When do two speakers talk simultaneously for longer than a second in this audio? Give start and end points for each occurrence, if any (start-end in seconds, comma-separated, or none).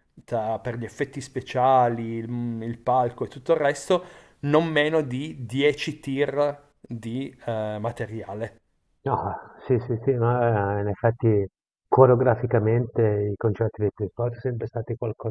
none